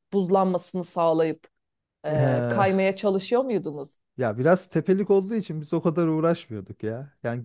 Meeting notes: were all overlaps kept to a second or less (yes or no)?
yes